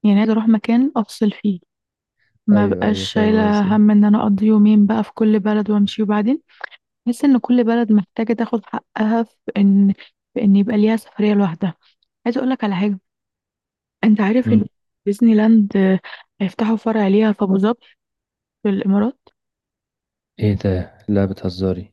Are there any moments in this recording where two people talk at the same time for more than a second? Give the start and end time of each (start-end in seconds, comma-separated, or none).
2.5-3.8